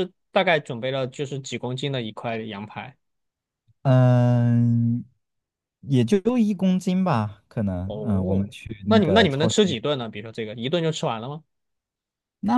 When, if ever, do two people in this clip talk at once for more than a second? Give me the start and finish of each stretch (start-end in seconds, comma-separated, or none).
7.8-9.6